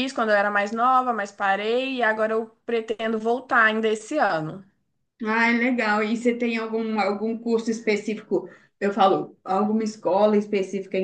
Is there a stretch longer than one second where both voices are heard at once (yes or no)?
no